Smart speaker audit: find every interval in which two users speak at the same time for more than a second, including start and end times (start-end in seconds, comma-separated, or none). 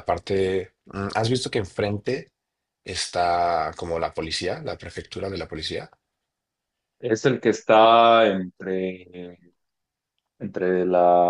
none